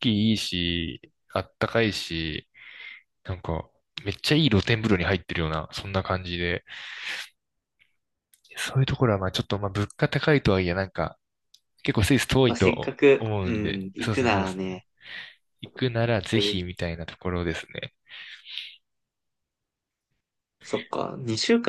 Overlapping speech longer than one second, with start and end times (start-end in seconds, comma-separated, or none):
12.5-14.8